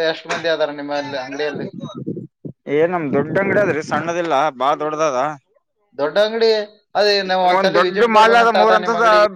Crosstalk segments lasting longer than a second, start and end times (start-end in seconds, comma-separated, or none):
none